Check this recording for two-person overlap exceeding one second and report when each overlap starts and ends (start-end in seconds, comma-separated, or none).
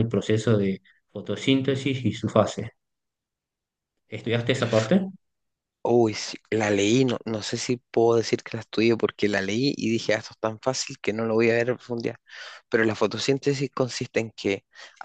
none